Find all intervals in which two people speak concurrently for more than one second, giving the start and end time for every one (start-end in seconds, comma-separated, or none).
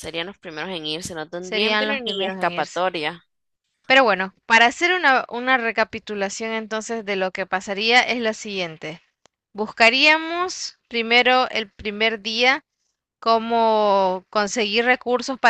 1.4-2.8